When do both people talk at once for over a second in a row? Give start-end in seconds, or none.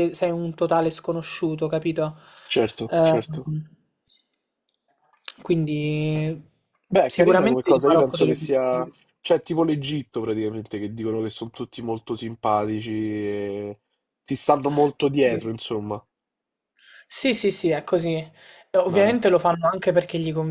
7.0-8.9